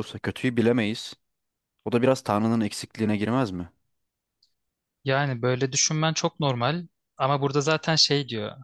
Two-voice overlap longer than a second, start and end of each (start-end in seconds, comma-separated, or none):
none